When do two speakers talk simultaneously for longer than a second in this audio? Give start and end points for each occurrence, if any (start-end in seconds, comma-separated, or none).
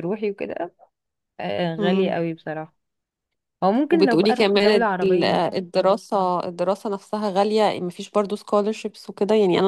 3.9-5.5